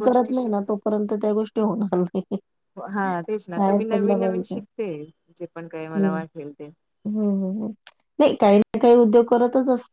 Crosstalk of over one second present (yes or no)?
no